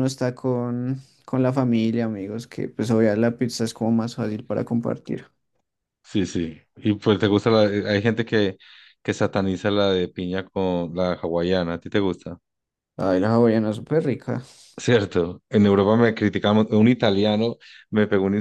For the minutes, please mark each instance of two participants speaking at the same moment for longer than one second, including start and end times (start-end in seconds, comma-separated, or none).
none